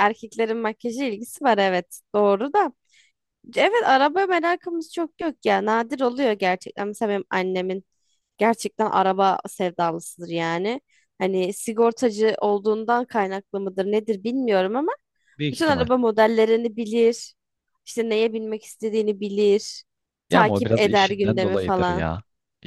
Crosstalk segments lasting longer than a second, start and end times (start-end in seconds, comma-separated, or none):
20.3-22.1